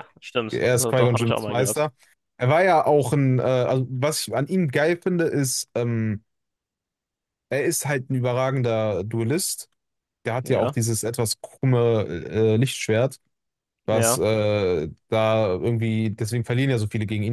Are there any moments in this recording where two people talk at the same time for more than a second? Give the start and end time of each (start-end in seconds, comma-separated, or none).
0.5-1.9